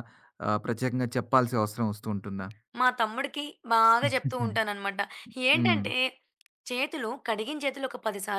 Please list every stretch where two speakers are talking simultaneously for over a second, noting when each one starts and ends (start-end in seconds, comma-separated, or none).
none